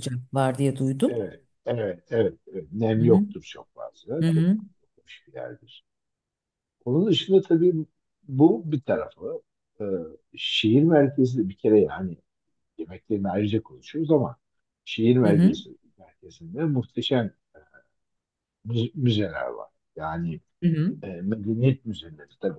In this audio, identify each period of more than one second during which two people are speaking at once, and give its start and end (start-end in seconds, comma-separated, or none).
none